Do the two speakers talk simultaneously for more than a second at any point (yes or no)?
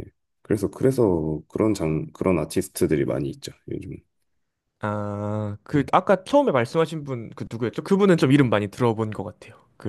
no